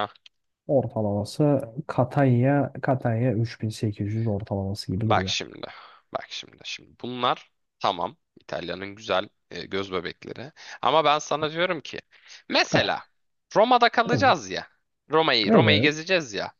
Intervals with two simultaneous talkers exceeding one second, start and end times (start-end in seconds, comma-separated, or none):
none